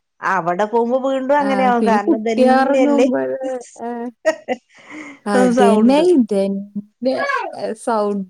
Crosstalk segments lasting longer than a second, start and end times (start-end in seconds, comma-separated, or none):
1.5-3.0